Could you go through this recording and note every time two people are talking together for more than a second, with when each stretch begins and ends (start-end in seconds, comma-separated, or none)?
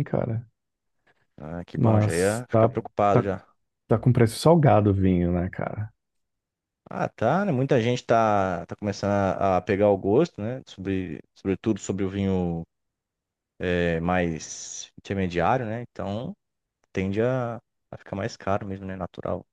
1.8-3.3